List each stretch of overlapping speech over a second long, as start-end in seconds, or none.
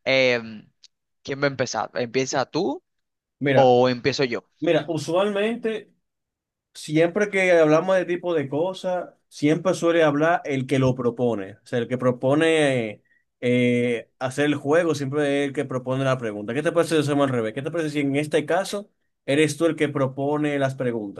none